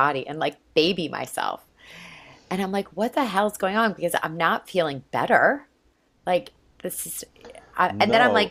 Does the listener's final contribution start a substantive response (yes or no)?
no